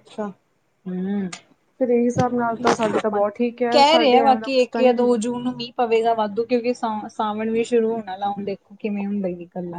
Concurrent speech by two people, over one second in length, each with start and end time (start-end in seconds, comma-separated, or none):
3.7-5.2